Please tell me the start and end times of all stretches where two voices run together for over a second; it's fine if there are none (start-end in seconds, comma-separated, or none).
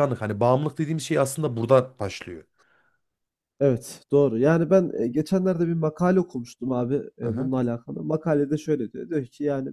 none